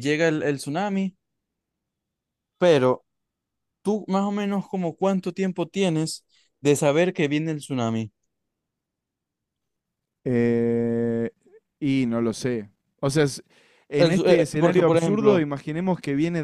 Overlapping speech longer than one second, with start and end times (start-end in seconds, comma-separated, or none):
14.0-15.5